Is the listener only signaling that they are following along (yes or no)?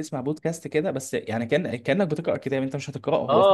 no